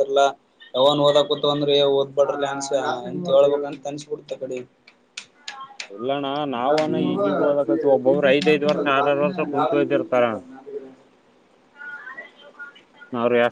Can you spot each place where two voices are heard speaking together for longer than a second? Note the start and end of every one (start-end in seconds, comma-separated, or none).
8.1-10.2